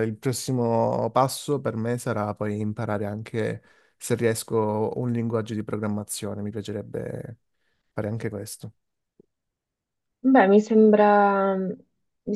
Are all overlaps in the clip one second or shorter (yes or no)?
yes